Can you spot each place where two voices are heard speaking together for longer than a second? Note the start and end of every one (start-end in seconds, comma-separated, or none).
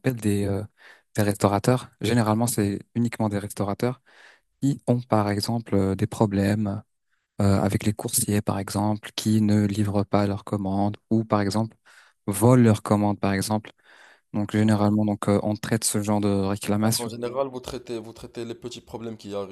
none